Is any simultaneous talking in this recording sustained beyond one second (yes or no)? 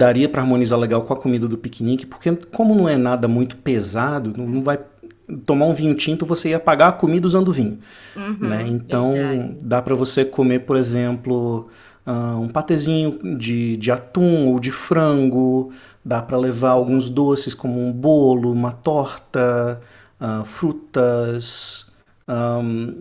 yes